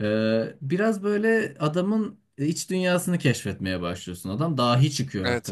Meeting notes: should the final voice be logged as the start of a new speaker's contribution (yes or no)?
yes